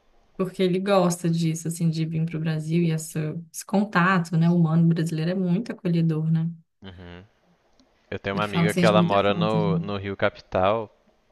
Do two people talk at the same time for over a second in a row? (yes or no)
yes